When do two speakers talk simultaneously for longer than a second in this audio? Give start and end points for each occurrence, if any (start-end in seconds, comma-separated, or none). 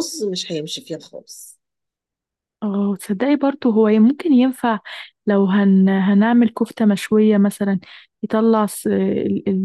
none